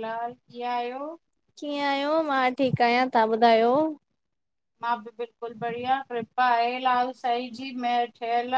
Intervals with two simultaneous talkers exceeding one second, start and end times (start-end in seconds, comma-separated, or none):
none